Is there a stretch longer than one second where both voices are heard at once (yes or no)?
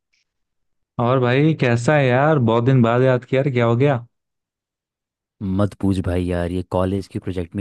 no